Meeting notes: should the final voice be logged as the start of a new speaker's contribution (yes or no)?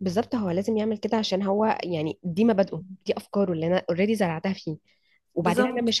no